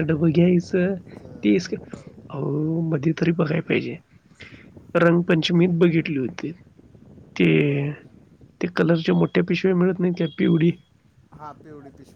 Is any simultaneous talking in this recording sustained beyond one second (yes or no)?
no